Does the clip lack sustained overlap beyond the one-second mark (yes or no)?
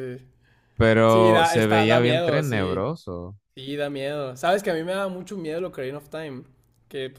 no